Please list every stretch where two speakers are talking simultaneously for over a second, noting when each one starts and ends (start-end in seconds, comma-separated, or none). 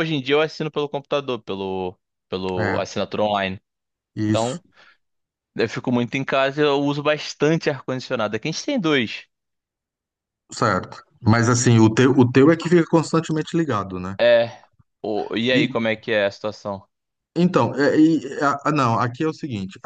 none